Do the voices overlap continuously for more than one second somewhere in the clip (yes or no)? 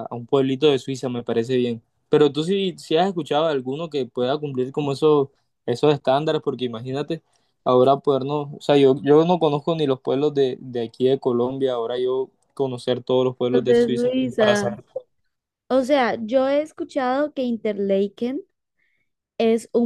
yes